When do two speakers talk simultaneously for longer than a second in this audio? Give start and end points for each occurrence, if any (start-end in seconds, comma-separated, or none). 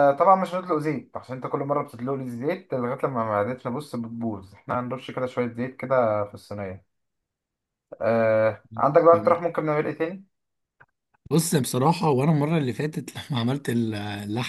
none